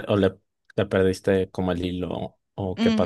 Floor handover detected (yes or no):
yes